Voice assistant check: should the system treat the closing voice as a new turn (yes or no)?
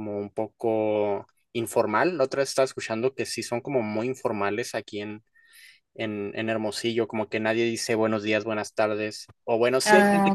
no